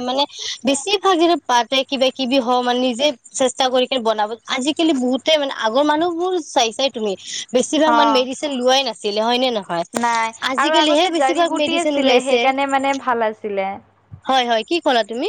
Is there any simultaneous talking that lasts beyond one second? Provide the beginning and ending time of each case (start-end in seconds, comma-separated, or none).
10.6-12.4